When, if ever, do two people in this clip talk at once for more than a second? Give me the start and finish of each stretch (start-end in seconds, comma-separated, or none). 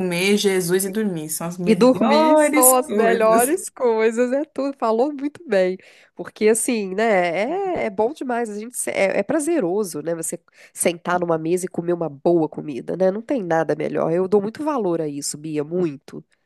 1.6-3.6